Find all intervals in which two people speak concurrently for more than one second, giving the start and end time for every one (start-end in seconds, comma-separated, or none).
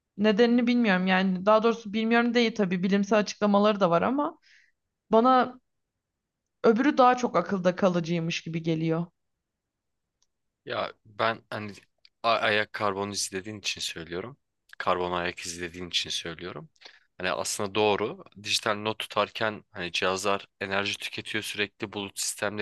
none